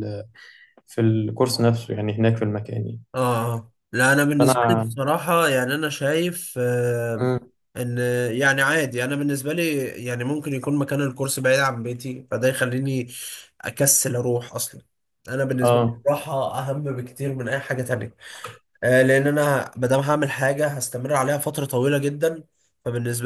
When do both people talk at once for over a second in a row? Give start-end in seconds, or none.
none